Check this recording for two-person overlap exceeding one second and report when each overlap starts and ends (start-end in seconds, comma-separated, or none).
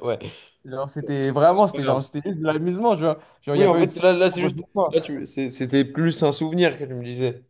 3.5-5.0